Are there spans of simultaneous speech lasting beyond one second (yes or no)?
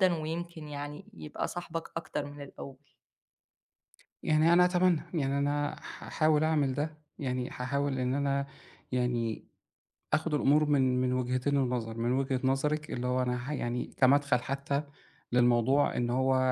no